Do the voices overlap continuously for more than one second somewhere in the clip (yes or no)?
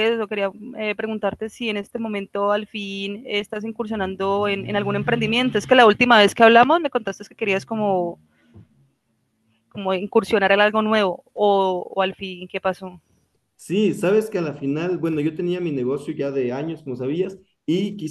no